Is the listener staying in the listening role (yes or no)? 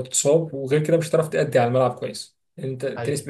yes